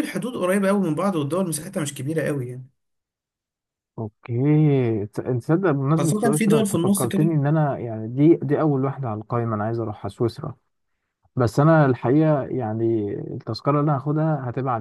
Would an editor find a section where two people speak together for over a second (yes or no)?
yes